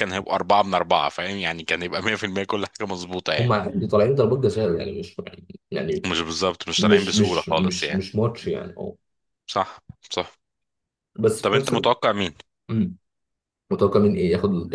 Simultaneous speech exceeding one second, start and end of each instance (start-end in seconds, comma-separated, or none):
6.8-8.0